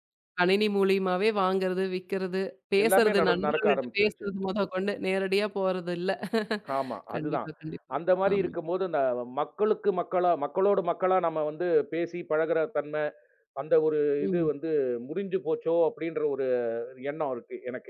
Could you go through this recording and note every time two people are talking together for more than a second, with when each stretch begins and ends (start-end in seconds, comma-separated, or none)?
2.8-4.3